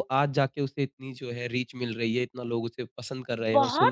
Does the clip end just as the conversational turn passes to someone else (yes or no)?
yes